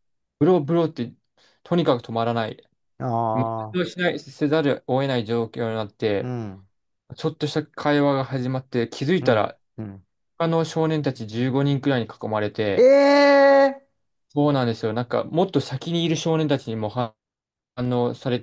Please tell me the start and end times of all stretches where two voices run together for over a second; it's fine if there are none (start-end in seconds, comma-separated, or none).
none